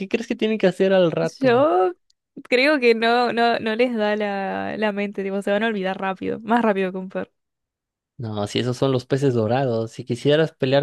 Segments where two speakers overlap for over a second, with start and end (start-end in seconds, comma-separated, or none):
none